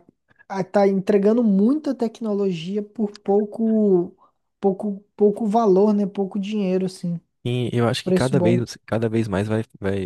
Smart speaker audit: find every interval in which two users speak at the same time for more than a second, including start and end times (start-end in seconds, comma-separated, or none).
none